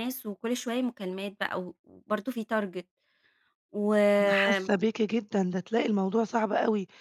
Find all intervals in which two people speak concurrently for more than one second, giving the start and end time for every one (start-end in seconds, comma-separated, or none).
none